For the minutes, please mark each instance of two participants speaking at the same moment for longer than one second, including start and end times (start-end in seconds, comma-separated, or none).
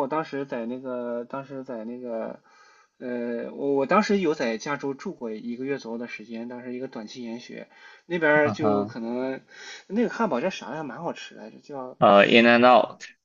none